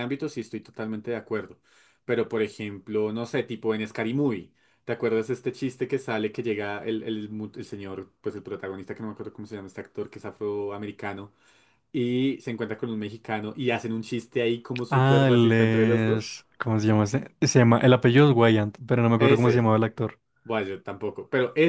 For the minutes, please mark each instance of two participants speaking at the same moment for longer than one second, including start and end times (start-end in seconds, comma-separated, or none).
14.9-16.3